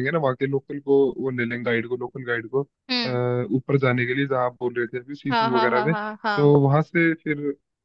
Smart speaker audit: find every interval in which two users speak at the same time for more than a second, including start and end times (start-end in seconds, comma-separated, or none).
5.3-6.5